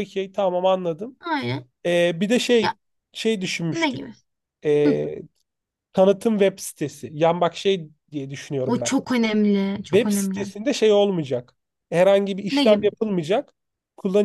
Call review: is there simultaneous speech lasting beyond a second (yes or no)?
no